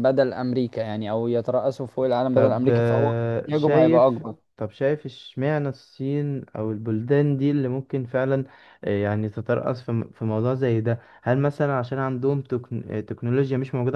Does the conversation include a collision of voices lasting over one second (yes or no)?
yes